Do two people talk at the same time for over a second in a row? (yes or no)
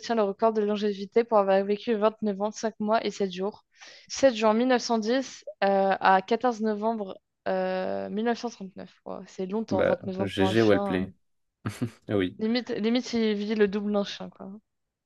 yes